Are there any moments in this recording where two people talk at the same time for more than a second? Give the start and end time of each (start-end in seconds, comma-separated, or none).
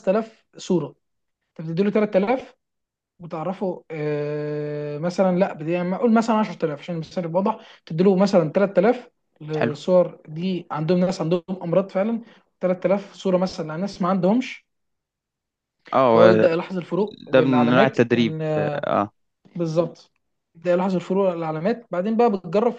17.3-18.9